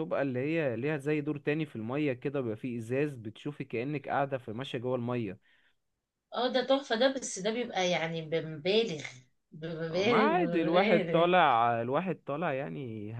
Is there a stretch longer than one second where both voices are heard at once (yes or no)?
yes